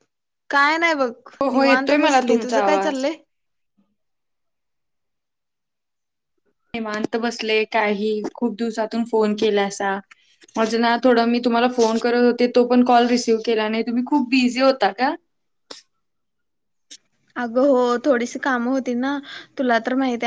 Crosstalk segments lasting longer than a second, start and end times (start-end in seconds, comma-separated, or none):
1.4-3.0